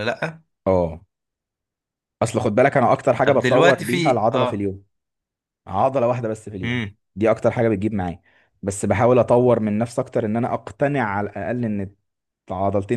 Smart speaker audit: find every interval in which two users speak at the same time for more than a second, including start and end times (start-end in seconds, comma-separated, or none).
3.2-4.7